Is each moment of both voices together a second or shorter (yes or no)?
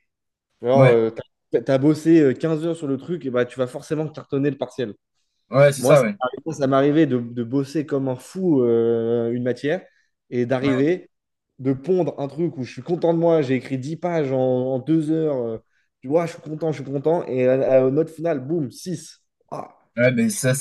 yes